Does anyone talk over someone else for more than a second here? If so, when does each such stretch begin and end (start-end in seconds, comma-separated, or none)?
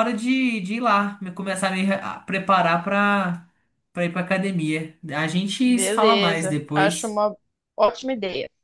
5.7-7.2